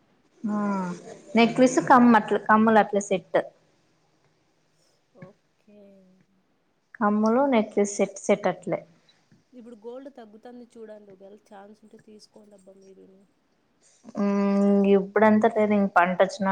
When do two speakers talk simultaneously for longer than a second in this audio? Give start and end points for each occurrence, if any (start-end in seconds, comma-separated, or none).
none